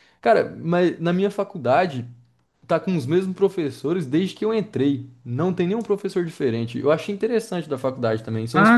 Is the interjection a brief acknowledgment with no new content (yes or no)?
no